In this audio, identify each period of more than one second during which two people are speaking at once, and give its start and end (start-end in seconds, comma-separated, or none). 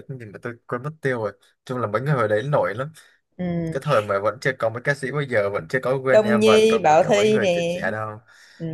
6.1-7.8